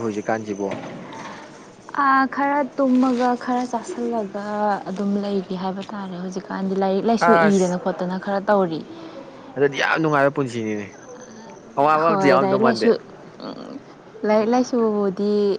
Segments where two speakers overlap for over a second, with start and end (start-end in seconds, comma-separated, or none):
none